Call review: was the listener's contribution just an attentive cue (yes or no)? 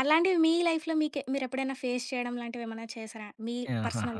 no